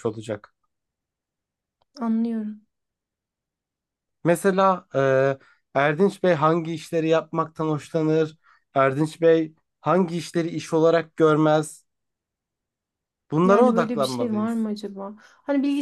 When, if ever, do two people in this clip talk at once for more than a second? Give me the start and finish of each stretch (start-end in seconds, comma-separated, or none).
13.4-14.7